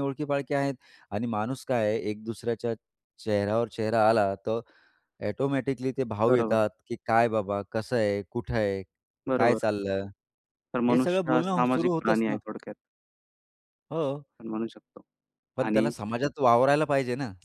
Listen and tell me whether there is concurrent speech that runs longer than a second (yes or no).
yes